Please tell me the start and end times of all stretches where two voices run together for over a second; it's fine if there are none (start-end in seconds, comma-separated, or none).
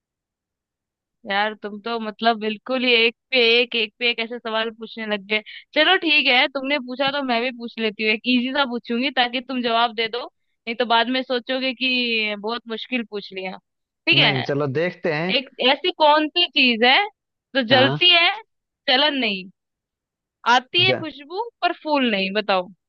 none